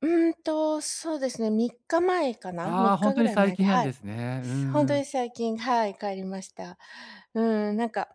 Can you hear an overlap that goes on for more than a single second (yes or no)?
yes